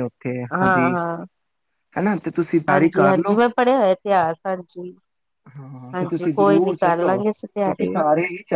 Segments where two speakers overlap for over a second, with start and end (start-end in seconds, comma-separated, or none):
5.9-8.0